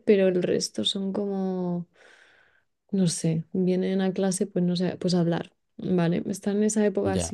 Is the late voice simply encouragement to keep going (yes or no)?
yes